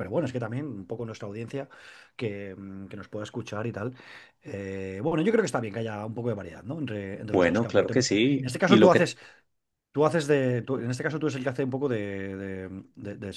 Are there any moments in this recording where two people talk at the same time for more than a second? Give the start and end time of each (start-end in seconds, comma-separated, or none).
7.3-9.1